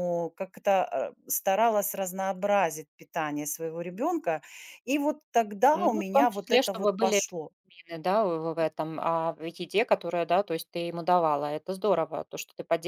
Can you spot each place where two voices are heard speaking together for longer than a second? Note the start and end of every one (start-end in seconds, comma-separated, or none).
5.7-7.2